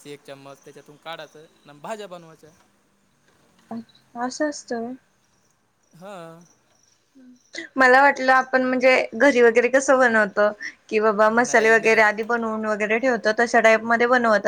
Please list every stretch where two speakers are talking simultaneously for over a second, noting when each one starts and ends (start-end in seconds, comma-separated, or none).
none